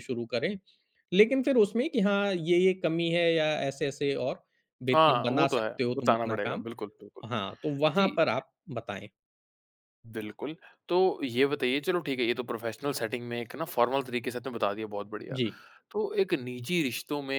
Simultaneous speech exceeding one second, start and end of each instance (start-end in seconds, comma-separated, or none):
4.9-6.6